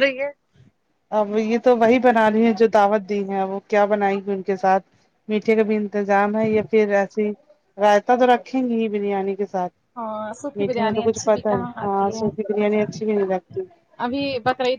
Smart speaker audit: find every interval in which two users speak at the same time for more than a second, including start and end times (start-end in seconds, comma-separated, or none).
10.6-12.2